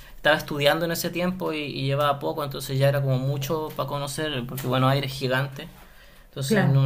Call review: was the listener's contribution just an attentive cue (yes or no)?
yes